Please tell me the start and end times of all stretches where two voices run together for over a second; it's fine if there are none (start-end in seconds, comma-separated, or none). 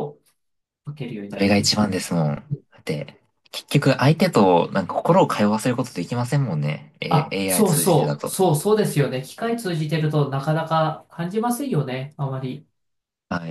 7.1-8.4